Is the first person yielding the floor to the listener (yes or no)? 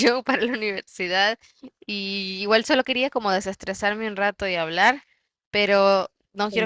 no